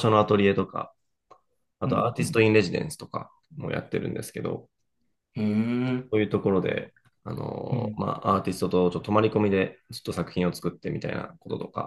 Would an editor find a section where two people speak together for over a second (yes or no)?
no